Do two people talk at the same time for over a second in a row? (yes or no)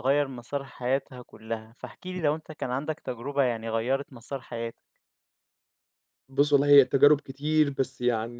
no